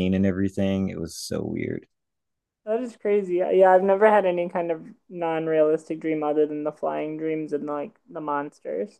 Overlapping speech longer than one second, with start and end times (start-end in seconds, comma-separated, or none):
none